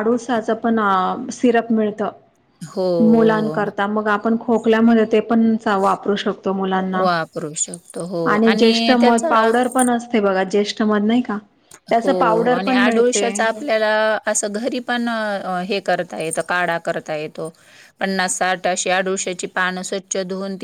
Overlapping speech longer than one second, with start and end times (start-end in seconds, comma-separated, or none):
12.0-13.5